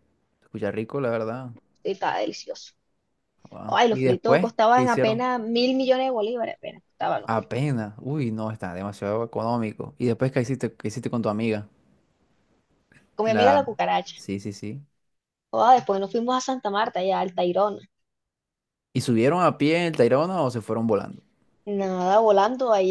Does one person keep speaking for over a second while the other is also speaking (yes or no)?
yes